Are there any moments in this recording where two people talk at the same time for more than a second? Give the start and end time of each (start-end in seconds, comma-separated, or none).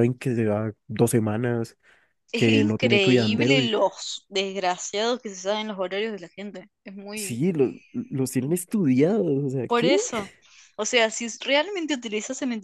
2.3-3.7